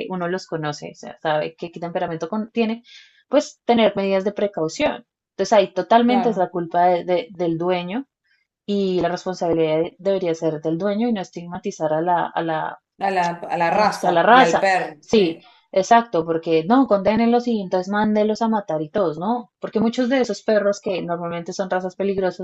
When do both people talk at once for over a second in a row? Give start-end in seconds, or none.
13.7-15.5